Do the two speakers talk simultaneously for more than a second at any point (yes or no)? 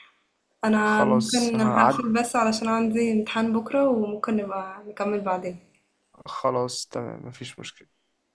yes